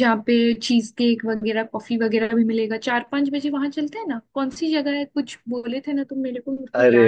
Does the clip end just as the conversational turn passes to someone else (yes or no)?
yes